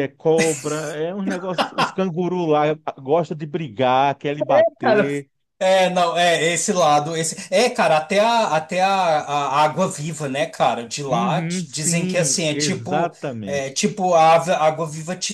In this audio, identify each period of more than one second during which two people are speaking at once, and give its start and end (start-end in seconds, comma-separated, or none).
11.1-13.7